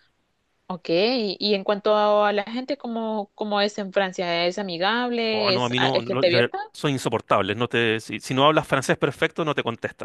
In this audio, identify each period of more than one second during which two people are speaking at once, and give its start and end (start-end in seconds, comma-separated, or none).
5.3-6.6